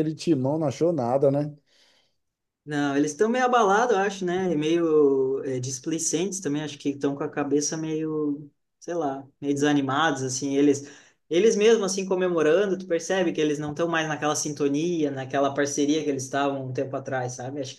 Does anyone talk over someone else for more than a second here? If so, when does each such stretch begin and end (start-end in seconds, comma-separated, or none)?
none